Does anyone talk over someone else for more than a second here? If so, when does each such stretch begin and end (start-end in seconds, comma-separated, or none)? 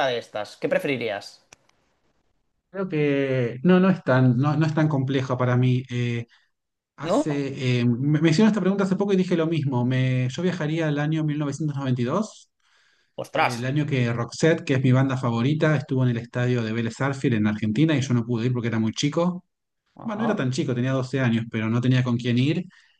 none